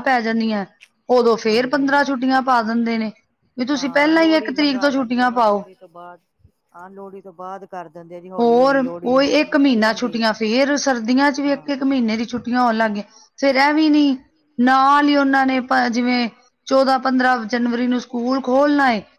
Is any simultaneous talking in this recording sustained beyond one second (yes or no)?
yes